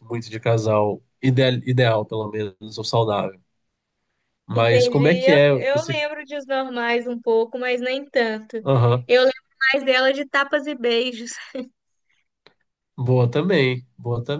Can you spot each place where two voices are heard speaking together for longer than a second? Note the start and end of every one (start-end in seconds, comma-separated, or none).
4.5-6.0